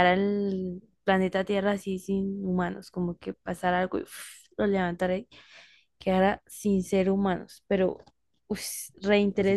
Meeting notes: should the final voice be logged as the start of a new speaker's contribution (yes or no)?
yes